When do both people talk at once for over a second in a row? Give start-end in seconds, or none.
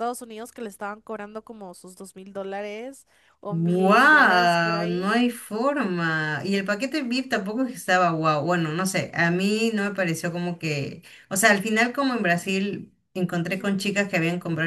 3.5-5.2